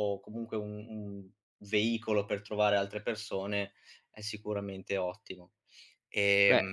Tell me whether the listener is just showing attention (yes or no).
no